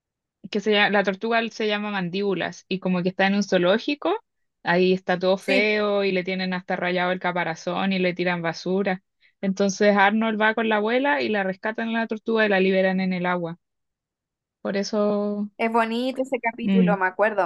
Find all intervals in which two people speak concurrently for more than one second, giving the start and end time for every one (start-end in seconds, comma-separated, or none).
none